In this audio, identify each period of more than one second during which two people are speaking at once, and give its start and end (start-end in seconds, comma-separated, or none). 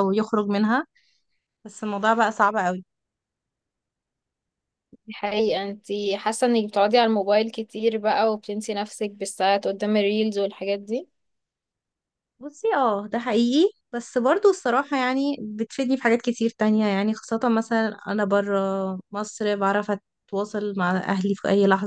none